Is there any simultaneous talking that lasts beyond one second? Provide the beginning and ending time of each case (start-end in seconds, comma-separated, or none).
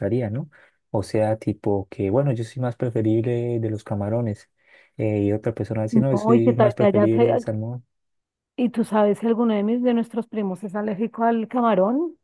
5.9-7.4